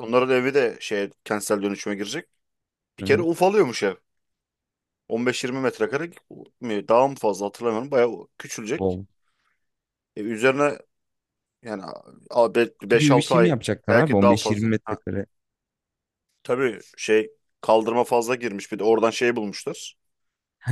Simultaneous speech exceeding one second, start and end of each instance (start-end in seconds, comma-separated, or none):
12.8-15.0